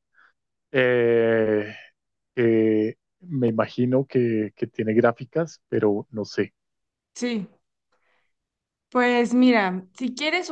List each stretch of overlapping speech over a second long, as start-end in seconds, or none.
none